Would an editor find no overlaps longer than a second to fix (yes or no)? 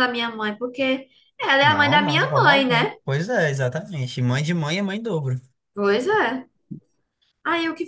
no